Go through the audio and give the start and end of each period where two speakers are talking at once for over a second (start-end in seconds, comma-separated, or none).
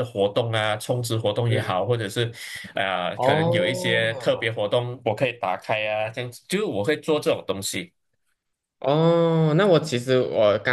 3.1-4.5